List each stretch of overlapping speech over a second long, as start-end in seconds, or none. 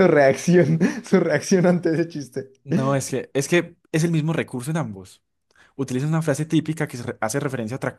none